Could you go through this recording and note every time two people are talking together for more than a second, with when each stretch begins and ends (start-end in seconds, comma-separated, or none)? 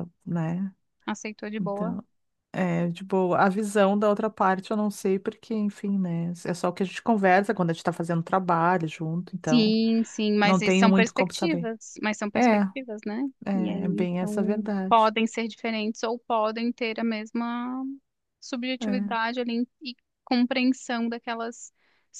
10.4-11.7, 13.4-15.1